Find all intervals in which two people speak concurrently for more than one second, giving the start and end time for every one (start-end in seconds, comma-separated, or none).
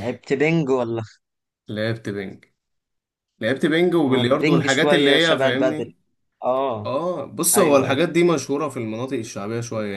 4.0-5.9